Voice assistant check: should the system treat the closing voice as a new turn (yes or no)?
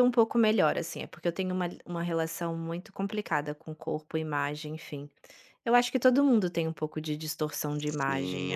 yes